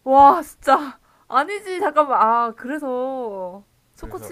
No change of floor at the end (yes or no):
yes